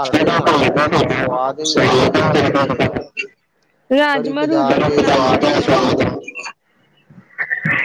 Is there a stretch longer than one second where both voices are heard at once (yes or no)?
yes